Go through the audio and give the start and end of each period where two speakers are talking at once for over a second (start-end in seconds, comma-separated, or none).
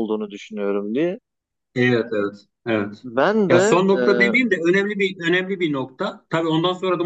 none